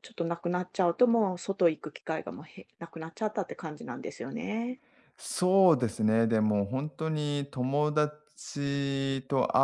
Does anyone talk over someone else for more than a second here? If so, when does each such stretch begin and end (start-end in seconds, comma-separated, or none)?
none